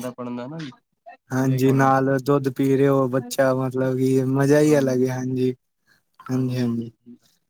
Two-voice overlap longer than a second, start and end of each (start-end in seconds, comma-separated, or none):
none